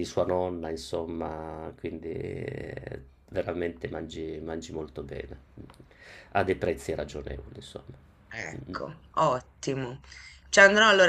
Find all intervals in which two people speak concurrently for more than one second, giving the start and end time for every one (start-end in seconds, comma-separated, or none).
none